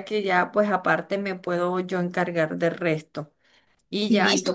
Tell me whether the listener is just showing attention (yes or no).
yes